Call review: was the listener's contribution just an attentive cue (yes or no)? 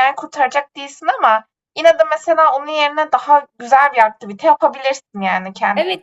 no